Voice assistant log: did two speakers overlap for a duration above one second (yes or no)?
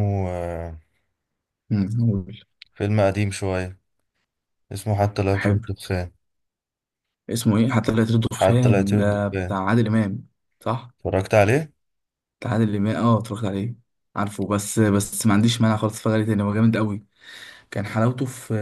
yes